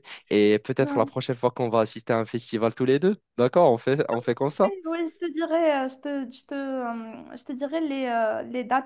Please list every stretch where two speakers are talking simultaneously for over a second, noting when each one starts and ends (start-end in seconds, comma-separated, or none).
none